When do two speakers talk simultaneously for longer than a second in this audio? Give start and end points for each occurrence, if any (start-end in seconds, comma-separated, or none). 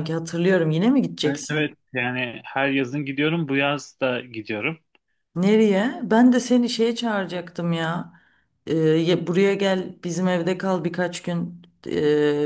none